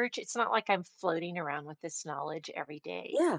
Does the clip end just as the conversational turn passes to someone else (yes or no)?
no